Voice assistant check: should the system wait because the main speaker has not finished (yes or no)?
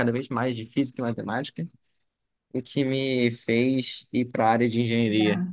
yes